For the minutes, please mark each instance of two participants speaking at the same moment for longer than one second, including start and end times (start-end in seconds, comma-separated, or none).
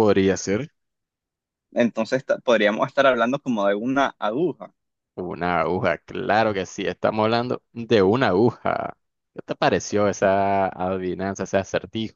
none